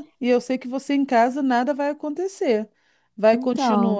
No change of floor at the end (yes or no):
yes